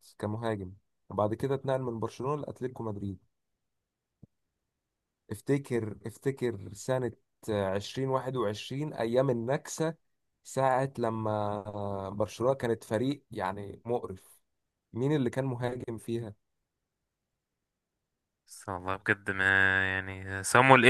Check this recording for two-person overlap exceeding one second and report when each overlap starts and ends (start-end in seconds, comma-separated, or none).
none